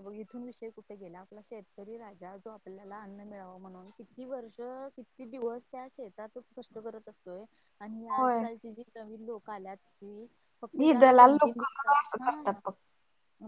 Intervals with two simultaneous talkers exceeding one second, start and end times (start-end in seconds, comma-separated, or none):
10.8-12.6